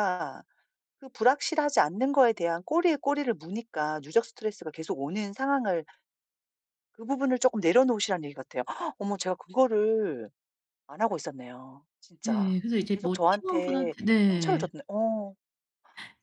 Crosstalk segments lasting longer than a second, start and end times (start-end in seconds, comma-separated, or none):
12.3-14.7